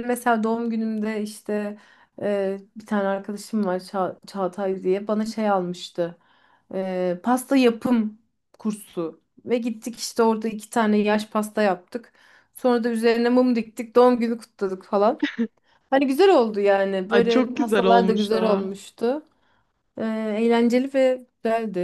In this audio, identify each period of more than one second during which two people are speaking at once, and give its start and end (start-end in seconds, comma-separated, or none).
17.1-18.7